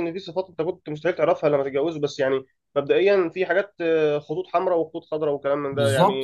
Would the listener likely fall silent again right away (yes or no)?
no